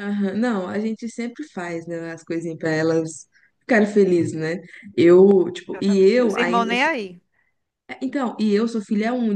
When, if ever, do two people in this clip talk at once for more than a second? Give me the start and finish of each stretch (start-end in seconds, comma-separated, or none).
5.7-6.9